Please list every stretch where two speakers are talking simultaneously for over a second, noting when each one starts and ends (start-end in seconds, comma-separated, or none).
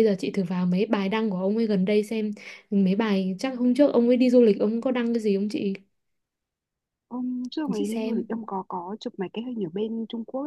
none